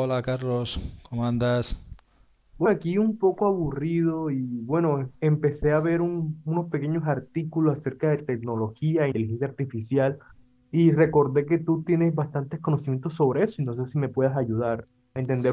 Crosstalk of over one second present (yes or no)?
no